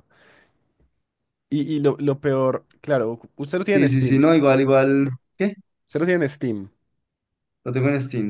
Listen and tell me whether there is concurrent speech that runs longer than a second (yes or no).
no